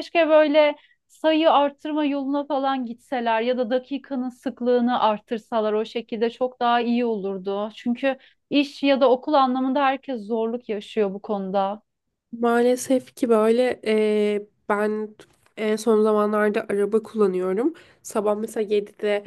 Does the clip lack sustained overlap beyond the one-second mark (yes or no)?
yes